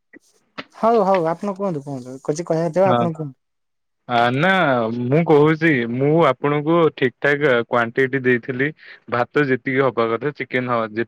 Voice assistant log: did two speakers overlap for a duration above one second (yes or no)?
no